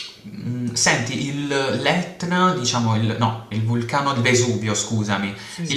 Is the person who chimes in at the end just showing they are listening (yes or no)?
yes